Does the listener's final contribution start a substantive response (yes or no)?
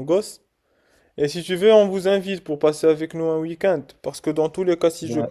no